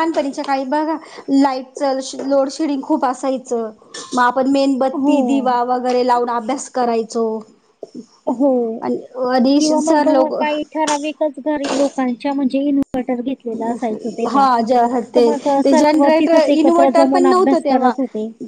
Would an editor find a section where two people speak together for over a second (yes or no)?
yes